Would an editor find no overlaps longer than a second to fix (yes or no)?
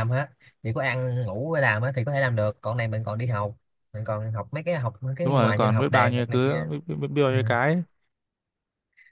no